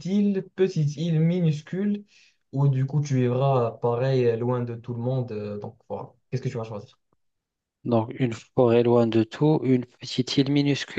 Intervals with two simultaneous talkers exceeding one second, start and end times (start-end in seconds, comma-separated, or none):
none